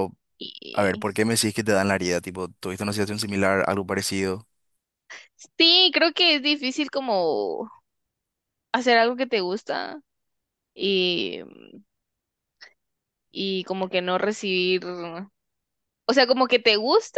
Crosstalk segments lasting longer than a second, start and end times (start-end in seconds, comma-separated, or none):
none